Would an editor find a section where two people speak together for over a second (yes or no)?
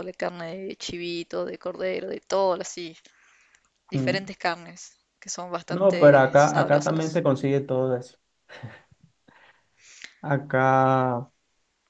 yes